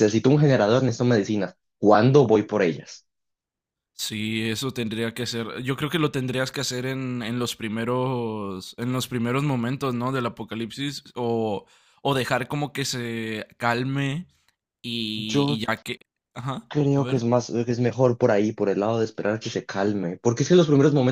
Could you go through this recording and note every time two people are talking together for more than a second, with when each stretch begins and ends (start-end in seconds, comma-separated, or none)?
none